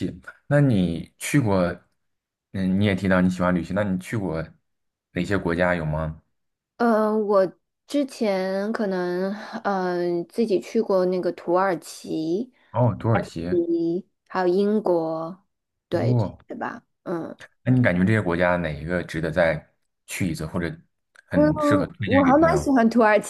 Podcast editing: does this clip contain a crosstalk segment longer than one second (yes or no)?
yes